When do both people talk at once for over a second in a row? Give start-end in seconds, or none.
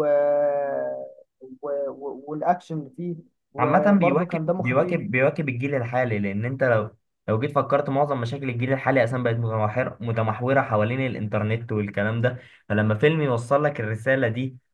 3.6-5.0